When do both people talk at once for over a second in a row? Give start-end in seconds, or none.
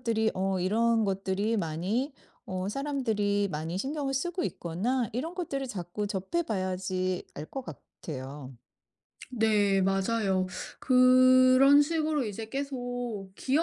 none